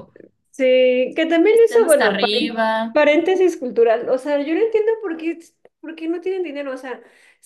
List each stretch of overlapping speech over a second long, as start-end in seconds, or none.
1.5-3.0